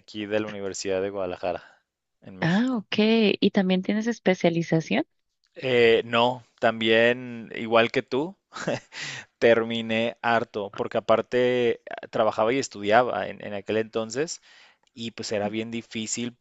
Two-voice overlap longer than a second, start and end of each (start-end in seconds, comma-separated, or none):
none